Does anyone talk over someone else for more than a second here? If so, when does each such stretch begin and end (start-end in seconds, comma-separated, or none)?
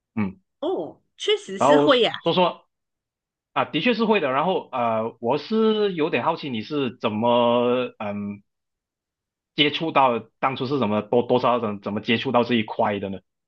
none